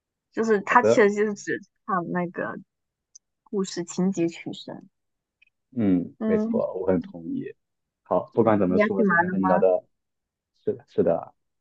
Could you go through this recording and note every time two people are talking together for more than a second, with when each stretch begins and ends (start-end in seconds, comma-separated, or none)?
8.3-9.6